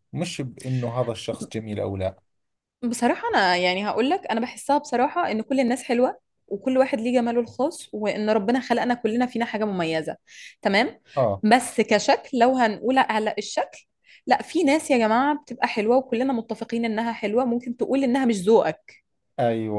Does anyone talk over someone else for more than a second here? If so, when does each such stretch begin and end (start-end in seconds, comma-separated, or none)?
none